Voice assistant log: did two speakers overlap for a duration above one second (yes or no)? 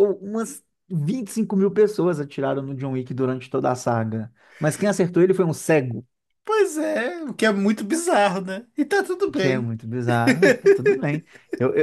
no